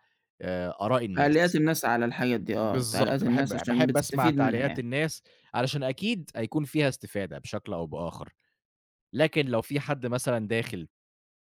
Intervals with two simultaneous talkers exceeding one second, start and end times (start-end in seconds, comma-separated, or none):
2.6-4.8